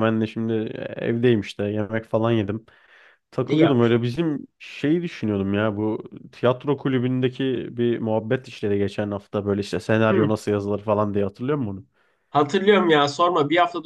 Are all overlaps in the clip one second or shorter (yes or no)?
yes